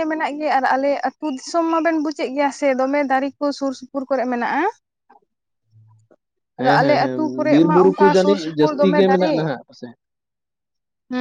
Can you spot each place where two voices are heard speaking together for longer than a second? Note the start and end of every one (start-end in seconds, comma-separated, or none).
6.6-9.4